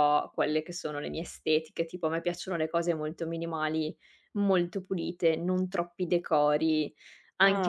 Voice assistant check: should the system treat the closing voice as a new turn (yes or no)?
no